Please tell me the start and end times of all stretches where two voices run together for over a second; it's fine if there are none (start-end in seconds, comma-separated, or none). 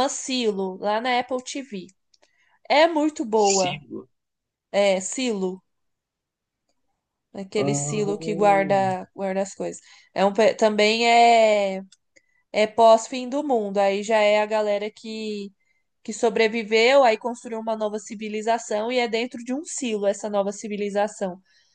7.5-8.9